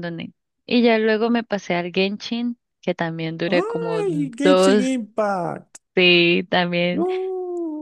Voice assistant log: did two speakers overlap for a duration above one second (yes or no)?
yes